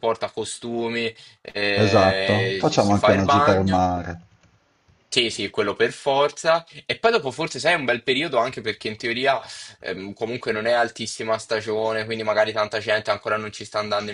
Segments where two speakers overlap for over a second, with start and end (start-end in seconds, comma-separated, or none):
1.8-3.9